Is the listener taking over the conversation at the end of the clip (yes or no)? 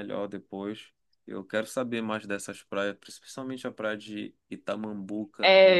yes